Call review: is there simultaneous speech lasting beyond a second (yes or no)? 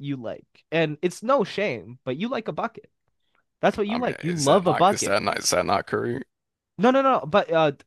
yes